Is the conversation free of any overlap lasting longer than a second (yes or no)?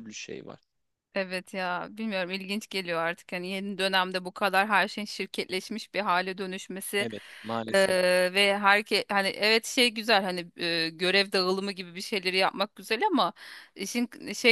yes